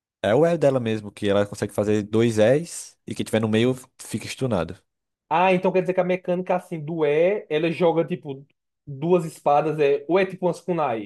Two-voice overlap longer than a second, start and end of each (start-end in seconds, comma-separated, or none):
none